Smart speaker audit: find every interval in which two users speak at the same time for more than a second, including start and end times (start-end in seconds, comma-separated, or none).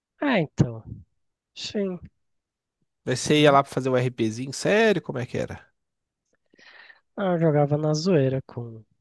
none